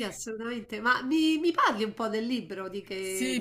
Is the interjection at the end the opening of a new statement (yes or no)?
yes